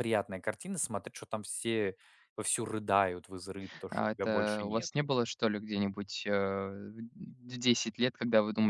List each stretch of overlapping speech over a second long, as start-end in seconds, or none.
3.9-5.1